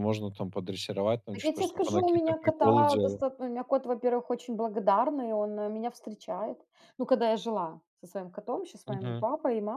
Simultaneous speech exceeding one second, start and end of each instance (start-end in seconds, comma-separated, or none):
1.3-3.2